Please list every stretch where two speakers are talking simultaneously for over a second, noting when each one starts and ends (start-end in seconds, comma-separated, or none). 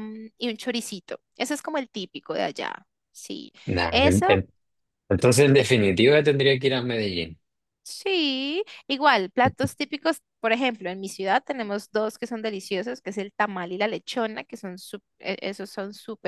none